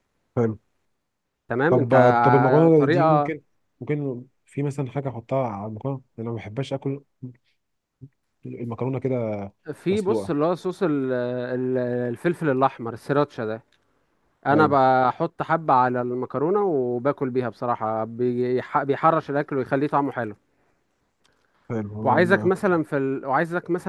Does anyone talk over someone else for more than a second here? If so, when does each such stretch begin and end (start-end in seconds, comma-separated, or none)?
1.7-3.3